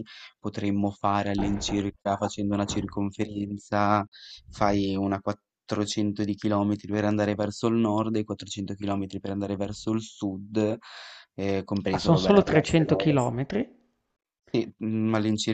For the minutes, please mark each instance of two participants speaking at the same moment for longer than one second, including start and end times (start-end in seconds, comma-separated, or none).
11.9-13.3